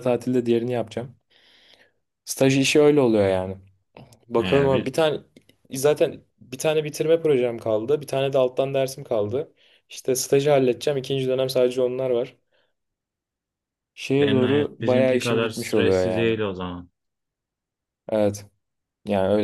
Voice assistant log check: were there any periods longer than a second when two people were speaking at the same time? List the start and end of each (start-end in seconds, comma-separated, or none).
14.2-16.4